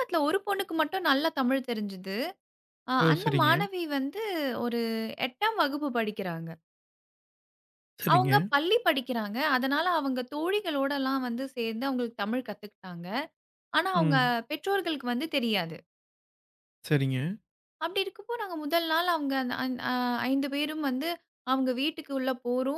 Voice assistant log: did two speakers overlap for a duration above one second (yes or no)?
no